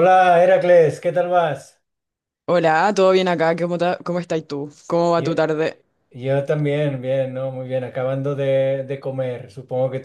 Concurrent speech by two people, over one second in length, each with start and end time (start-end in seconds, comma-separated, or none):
none